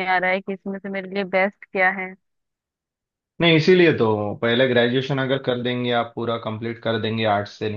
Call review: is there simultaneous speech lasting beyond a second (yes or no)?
no